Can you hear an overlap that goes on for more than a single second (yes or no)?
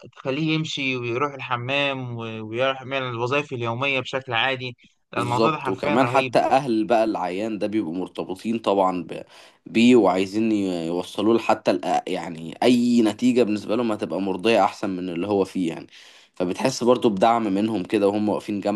yes